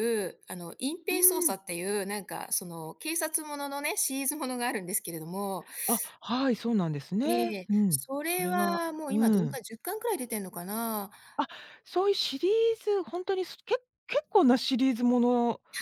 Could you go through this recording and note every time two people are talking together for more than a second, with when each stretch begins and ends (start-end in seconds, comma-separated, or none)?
7.2-9.6